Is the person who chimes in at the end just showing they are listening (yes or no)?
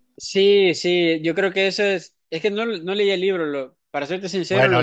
no